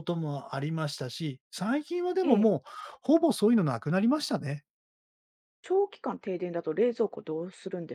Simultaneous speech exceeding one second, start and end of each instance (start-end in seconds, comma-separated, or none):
none